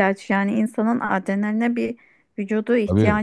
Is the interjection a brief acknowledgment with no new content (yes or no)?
yes